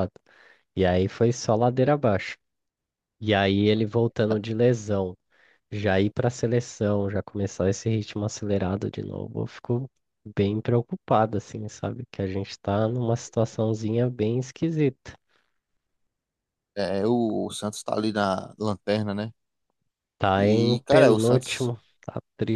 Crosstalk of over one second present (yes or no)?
yes